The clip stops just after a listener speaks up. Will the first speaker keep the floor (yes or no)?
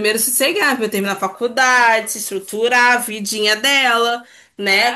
yes